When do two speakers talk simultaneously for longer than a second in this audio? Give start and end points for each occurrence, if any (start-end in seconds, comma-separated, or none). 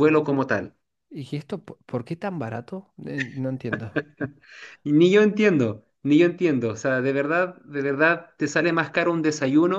none